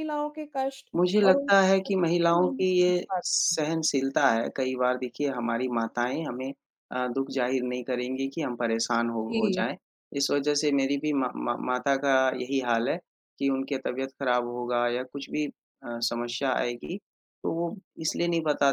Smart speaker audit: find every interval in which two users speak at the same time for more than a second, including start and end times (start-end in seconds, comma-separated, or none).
1.0-3.3